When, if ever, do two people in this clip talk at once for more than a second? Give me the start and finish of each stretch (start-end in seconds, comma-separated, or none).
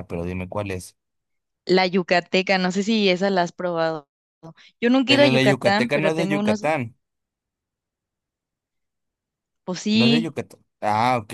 5.0-6.7